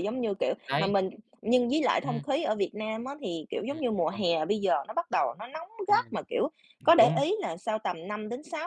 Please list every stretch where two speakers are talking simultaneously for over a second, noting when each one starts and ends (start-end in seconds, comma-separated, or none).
none